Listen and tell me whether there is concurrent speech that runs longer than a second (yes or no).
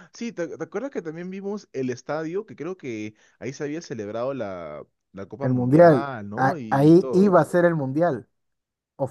yes